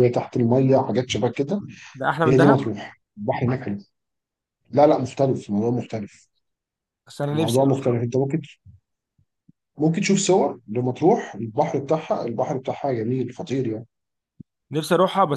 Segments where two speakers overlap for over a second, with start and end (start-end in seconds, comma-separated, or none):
none